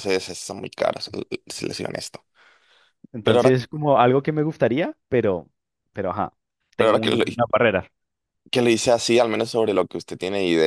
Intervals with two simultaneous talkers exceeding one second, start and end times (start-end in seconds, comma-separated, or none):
none